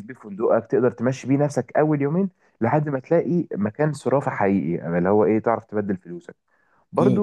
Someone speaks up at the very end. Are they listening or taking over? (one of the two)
listening